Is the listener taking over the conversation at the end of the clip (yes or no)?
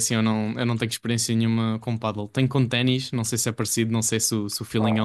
yes